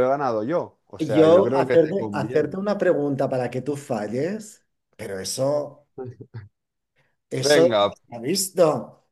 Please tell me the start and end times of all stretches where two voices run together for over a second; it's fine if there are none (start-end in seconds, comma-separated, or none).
1.0-2.6